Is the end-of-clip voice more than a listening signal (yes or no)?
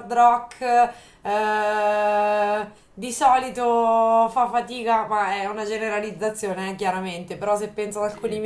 no